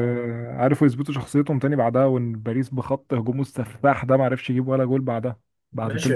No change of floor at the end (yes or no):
no